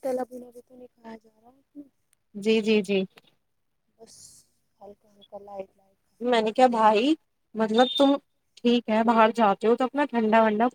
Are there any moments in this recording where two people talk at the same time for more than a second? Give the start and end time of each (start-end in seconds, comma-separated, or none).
none